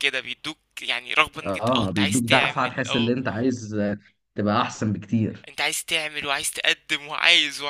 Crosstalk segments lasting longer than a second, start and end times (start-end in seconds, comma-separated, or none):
1.4-3.1